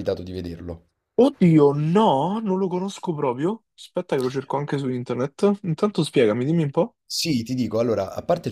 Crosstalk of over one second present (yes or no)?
no